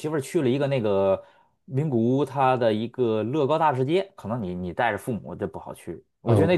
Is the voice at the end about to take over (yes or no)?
yes